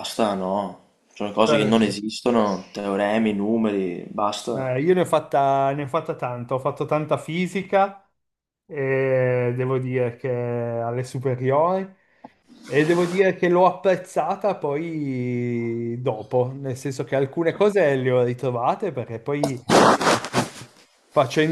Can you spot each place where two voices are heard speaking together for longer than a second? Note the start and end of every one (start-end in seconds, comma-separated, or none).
none